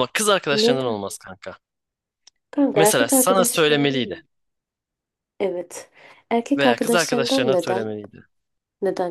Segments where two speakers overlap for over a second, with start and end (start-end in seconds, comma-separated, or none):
2.8-4.2, 6.6-7.9